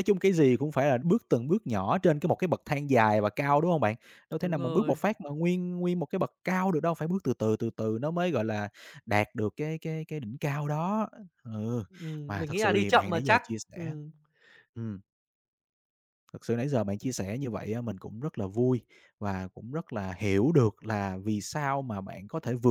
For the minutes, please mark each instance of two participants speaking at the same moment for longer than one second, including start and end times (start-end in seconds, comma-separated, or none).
12.3-13.9